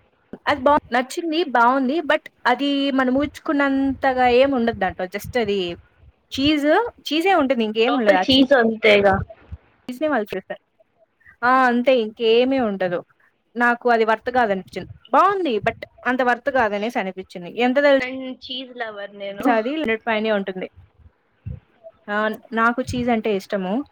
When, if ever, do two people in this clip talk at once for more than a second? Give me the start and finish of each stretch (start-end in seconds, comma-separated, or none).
none